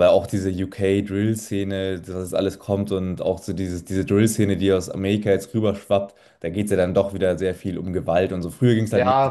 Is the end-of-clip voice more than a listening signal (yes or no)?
yes